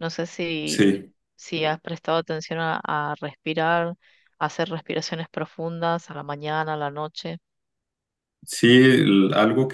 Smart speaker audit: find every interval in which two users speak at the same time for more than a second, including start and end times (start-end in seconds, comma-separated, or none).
none